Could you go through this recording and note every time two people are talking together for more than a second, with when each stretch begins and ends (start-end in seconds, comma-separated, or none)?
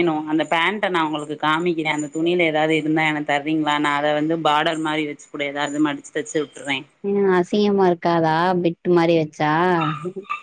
none